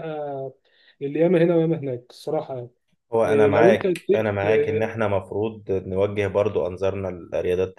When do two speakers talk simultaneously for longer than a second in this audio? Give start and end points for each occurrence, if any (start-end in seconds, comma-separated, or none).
3.3-4.8